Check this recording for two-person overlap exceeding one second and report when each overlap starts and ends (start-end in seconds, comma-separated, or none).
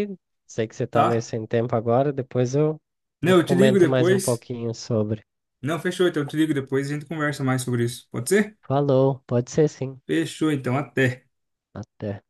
3.2-4.5